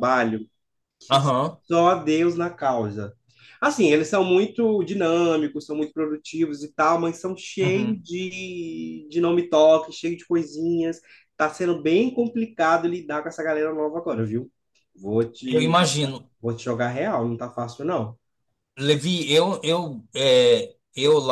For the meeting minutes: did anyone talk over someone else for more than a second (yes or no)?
no